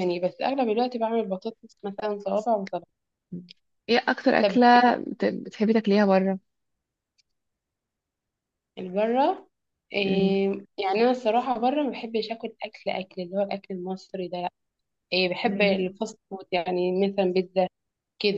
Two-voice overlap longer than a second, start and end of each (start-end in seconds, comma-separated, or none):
none